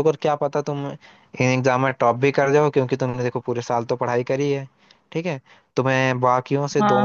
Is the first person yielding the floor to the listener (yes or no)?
yes